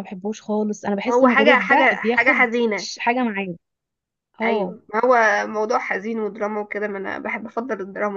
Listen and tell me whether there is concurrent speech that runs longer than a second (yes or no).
yes